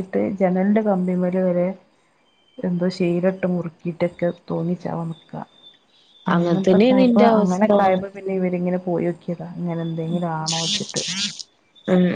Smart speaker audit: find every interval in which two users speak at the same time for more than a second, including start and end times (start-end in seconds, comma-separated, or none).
6.3-7.7